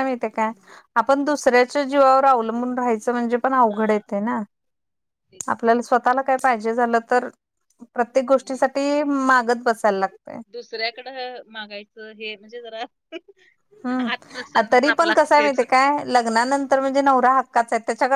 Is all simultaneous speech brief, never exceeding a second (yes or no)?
no